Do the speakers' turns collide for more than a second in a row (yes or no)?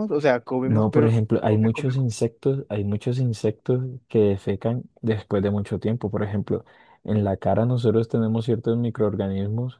yes